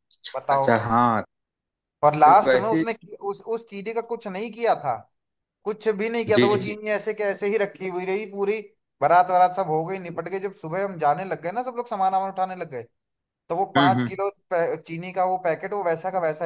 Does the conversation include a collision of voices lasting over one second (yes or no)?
no